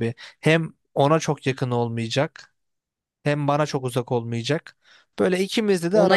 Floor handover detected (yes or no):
yes